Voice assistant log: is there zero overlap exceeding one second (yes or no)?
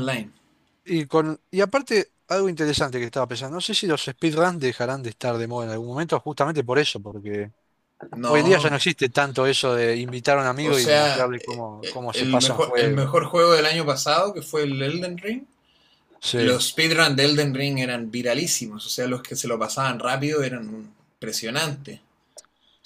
no